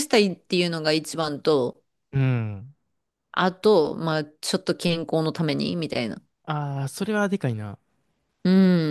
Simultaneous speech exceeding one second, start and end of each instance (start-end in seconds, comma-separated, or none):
none